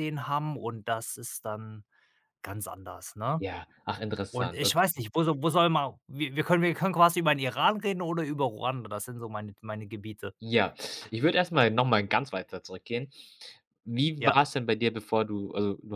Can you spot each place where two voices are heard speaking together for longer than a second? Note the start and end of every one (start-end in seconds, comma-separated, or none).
none